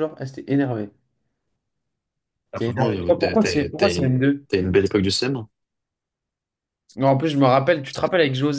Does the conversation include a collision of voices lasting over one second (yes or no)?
yes